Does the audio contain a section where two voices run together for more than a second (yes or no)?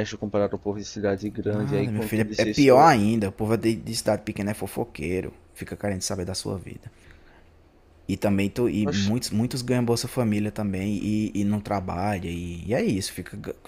yes